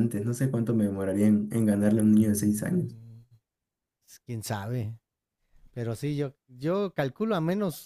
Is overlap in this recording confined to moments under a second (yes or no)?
no